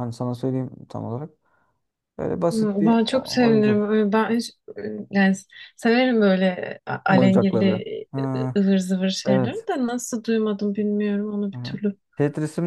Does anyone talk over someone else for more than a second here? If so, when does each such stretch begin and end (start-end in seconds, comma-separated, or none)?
2.5-3.9